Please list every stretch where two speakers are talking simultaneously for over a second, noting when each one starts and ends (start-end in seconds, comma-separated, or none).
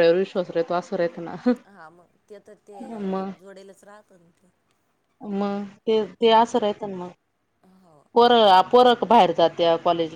none